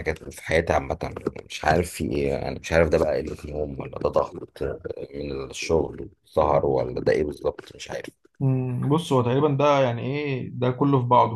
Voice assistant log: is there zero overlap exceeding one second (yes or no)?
yes